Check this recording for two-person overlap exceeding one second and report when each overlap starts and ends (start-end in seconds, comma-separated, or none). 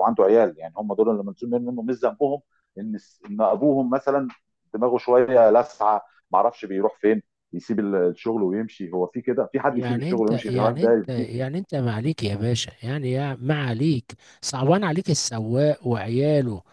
9.7-11.3